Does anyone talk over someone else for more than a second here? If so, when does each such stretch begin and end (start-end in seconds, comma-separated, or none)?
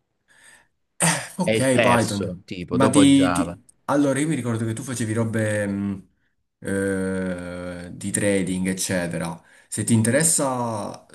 1.4-3.6